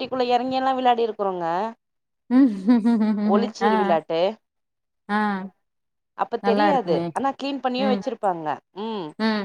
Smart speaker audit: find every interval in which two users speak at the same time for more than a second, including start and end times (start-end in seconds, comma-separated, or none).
none